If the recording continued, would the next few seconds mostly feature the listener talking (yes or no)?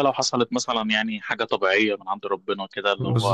yes